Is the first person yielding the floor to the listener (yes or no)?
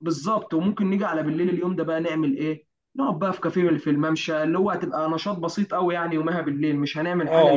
yes